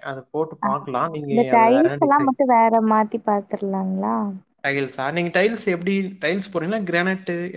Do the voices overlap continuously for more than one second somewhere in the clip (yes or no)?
no